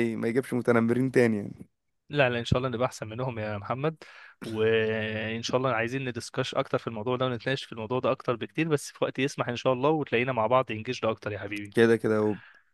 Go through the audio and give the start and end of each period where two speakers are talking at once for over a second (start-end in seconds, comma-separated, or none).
none